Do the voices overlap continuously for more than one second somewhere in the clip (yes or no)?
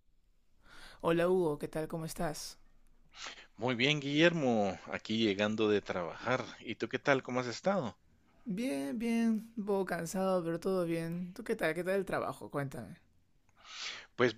no